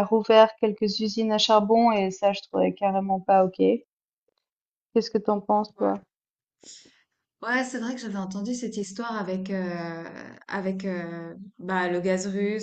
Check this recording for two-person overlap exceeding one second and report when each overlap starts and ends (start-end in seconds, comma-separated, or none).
none